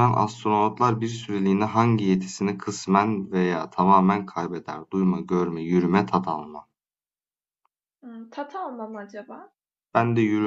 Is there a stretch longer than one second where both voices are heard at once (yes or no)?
no